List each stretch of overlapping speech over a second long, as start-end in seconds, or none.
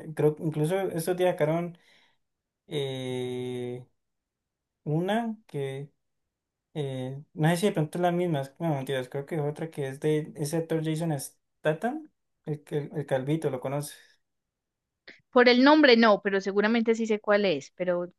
none